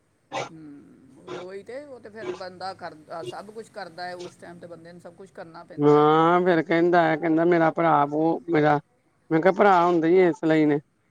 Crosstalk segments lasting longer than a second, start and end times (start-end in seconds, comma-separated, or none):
none